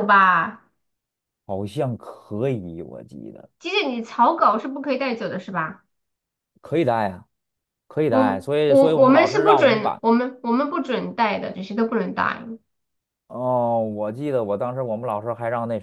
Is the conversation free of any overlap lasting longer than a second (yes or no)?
no